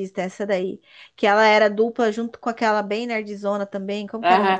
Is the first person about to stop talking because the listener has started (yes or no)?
yes